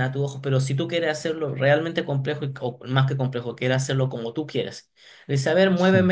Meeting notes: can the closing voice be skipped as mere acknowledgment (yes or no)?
yes